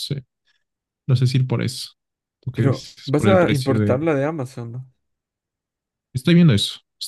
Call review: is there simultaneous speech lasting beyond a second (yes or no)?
yes